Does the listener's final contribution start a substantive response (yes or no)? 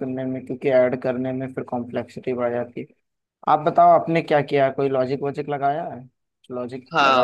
yes